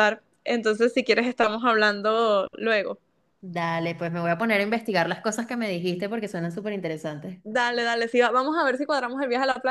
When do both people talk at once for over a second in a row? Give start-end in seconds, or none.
none